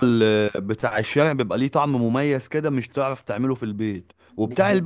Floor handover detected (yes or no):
no